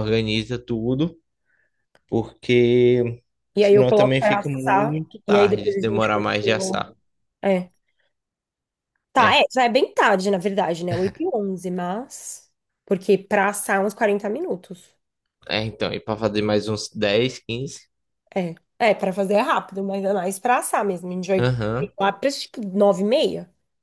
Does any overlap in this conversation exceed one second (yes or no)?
yes